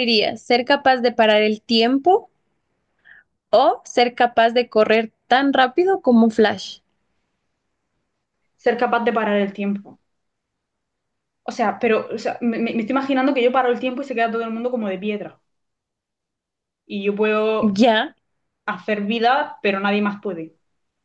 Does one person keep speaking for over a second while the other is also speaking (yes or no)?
no